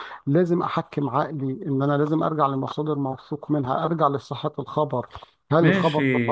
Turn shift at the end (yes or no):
yes